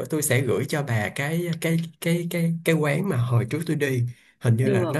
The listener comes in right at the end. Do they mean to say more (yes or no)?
no